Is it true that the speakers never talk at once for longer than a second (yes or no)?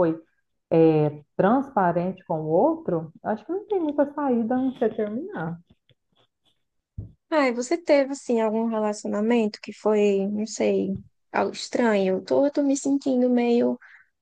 yes